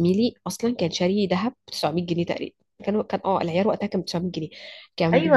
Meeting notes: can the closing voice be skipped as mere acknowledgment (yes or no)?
no